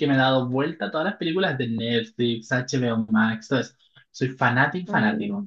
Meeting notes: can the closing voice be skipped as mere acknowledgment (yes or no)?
no